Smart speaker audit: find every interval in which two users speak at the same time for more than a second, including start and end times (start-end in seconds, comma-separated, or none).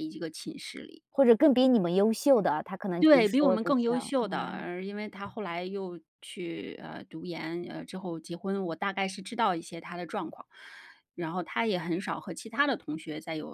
3.0-4.7